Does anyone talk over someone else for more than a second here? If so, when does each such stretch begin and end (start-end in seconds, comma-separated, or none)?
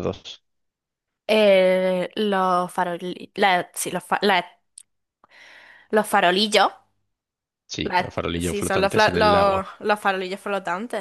7.8-9.7